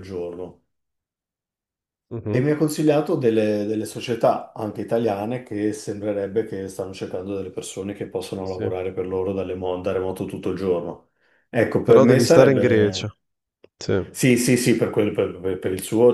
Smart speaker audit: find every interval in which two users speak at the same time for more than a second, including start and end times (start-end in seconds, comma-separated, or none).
11.8-13.1